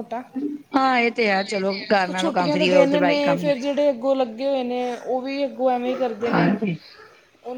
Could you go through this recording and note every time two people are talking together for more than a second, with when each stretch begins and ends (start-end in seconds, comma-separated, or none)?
2.2-3.5